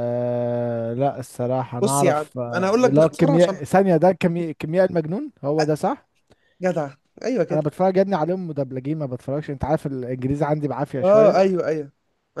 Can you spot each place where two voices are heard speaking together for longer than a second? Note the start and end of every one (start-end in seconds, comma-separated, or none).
1.8-3.6